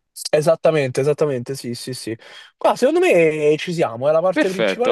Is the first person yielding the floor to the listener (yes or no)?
yes